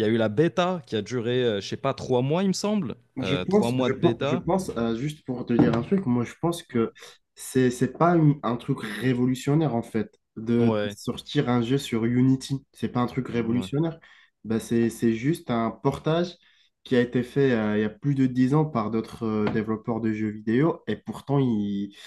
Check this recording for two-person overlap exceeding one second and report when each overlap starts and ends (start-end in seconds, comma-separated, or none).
3.2-4.5